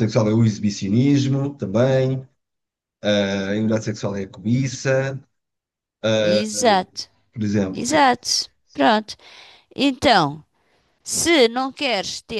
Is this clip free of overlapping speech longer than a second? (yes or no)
yes